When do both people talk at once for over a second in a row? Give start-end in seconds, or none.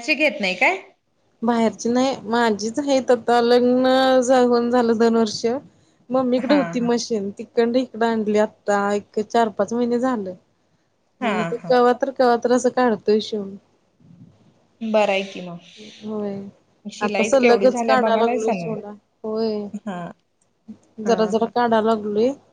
17.1-18.8